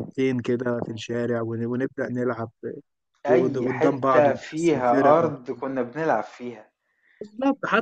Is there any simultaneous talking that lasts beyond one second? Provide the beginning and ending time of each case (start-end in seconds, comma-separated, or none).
3.3-5.3